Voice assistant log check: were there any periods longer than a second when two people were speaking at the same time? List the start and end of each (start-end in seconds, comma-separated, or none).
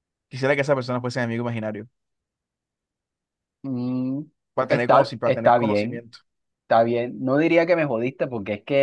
4.7-6.0